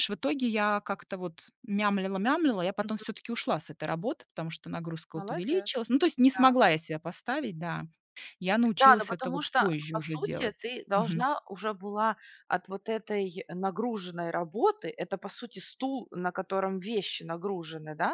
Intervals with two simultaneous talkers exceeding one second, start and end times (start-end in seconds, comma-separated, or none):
8.8-11.3